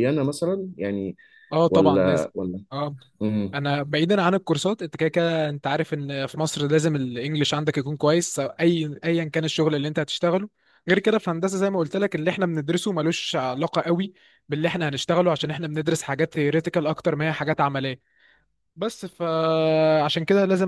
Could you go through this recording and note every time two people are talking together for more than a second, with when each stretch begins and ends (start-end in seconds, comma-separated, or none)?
none